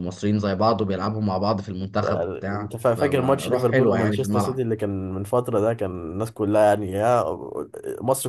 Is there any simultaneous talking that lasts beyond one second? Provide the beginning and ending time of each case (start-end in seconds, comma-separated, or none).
2.0-4.6